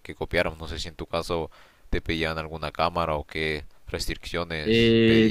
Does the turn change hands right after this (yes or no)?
yes